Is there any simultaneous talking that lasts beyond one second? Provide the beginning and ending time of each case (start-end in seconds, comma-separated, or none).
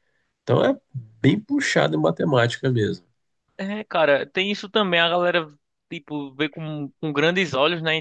none